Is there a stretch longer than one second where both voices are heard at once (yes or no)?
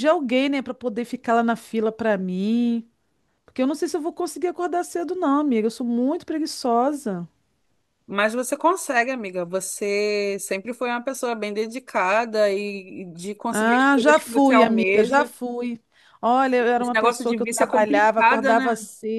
yes